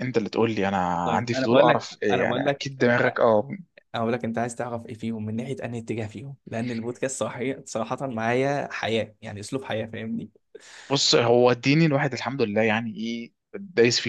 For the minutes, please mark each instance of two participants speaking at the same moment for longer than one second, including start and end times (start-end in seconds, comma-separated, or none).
1.1-3.0